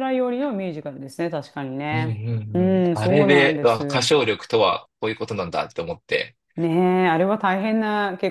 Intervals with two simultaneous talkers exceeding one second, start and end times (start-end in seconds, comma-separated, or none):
1.9-4.1